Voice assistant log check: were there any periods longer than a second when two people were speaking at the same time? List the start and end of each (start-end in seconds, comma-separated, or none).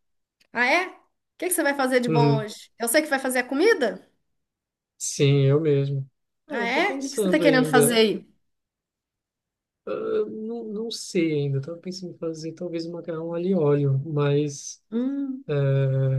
6.5-8.1